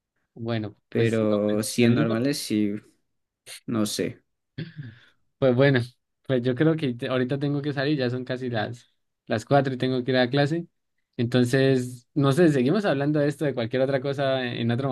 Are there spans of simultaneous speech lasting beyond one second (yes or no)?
yes